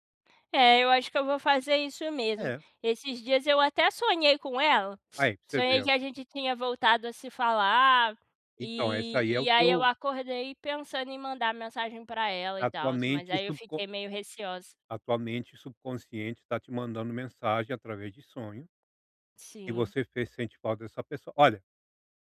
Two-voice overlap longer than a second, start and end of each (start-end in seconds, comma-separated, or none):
8.6-9.9, 12.6-13.8